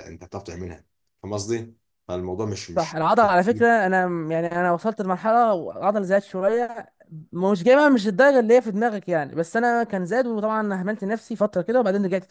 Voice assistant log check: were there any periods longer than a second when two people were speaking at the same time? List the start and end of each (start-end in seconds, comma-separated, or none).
none